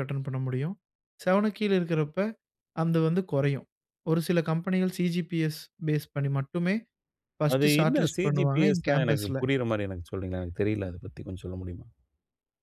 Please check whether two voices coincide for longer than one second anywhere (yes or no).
yes